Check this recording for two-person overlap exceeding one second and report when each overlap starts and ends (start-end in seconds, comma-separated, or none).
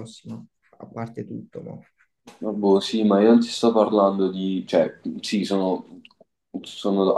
none